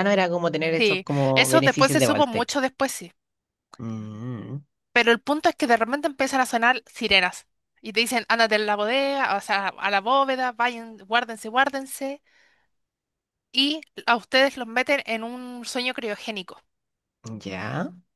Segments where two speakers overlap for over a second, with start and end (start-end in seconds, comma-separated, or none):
0.8-2.6